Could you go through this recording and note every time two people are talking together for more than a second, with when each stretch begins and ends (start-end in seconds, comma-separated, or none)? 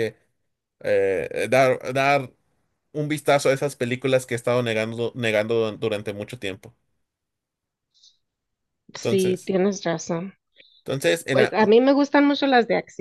none